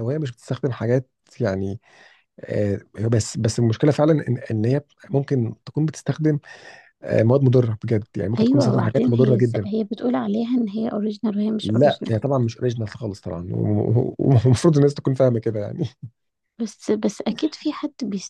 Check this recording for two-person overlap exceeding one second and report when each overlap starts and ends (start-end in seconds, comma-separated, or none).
8.4-9.7